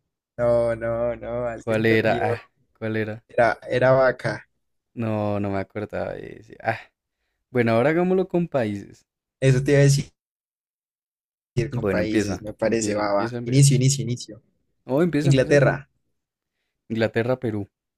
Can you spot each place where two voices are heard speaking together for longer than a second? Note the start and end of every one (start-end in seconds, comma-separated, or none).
11.7-13.7